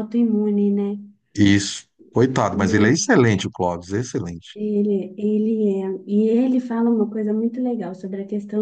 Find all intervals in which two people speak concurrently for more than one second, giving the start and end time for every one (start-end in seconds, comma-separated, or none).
none